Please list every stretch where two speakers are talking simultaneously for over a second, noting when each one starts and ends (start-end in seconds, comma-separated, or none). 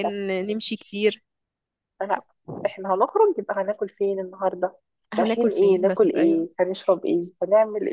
5.2-6.5